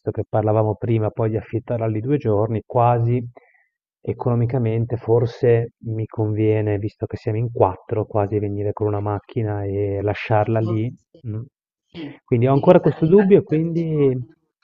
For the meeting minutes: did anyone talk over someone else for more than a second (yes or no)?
yes